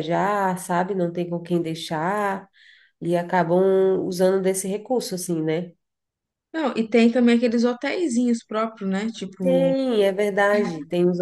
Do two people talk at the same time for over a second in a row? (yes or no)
no